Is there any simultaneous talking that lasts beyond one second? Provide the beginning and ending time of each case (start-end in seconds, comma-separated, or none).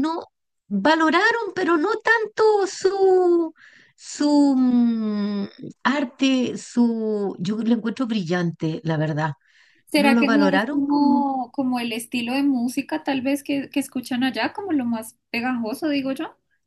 9.9-11.2